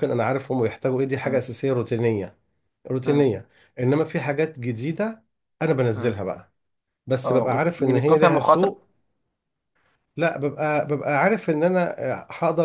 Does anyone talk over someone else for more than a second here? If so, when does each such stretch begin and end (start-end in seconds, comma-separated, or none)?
7.2-8.7